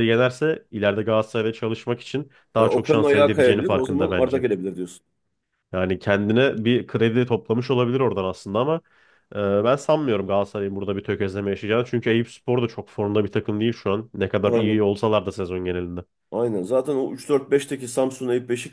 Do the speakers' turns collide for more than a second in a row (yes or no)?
yes